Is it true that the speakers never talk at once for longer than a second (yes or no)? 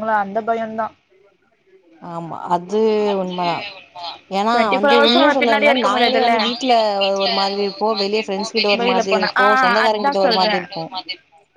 no